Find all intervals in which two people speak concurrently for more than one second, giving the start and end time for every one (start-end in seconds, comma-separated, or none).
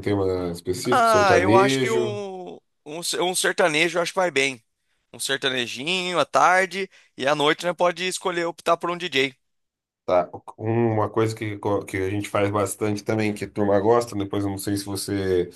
0.9-2.2